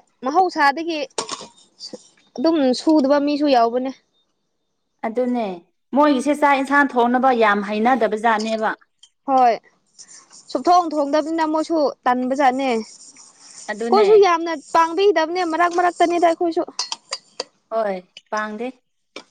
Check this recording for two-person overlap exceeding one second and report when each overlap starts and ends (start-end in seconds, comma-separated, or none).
none